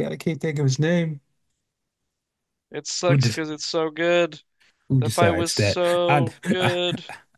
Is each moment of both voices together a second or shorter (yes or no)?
no